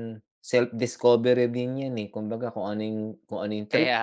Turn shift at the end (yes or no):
no